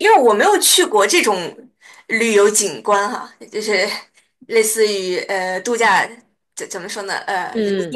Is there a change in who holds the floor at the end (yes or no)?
no